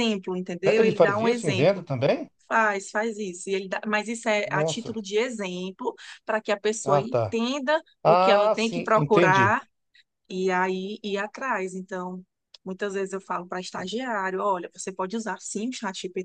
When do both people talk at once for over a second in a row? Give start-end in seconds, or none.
0.6-1.9, 8.0-9.6